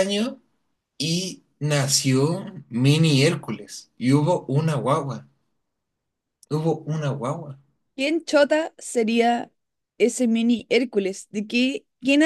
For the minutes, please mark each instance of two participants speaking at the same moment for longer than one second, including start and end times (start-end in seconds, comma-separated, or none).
none